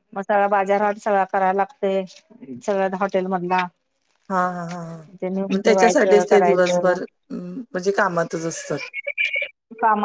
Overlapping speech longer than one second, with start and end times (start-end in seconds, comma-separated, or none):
5.5-7.0